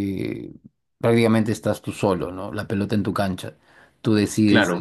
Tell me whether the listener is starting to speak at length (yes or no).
no